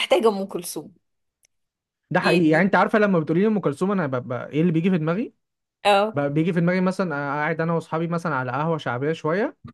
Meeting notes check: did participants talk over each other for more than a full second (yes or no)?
no